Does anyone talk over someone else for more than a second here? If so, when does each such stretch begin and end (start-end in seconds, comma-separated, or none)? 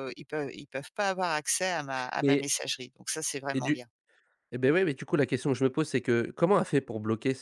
none